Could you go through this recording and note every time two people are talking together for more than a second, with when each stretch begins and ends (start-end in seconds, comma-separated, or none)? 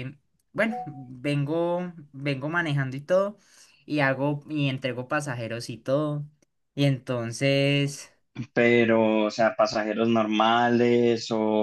none